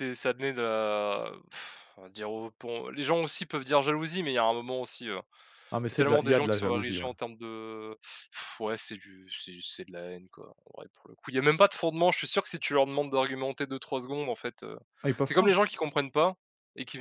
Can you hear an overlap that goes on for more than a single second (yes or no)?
yes